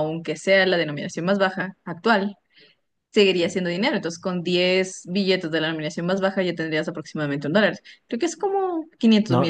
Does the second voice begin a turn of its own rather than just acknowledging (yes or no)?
yes